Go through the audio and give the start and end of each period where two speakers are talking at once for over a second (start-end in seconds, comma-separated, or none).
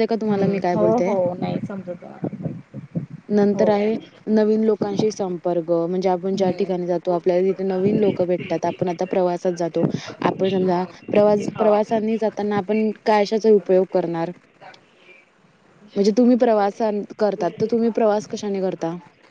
none